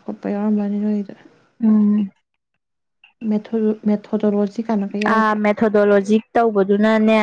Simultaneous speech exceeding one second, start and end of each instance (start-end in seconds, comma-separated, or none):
none